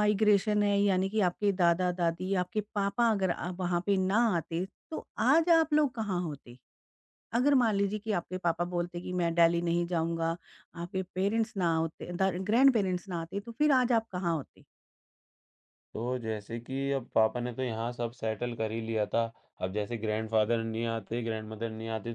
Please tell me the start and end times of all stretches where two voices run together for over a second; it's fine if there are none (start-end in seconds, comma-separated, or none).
none